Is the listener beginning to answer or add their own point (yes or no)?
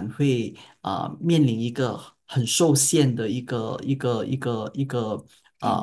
no